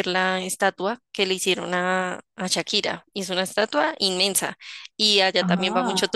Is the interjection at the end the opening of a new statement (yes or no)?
no